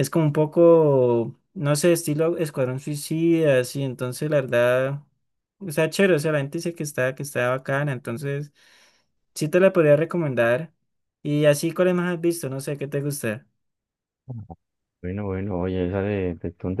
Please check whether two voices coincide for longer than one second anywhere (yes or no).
no